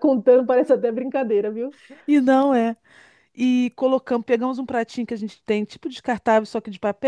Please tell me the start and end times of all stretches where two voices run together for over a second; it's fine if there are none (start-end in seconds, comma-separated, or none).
none